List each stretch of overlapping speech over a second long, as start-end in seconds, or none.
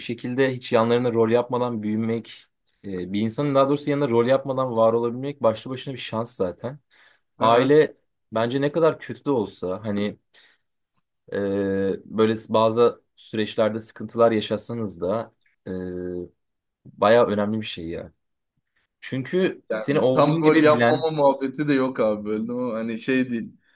19.7-21.1